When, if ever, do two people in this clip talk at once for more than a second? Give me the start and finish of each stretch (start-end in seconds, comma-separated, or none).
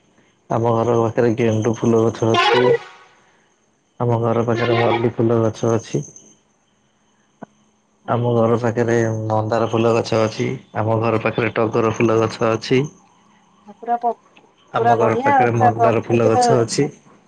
14.8-16.4